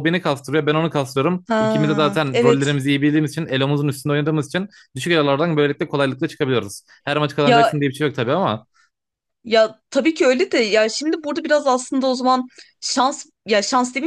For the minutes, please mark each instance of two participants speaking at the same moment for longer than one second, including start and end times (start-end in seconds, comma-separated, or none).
1.5-2.8